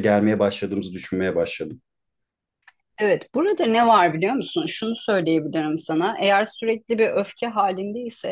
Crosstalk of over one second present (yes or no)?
no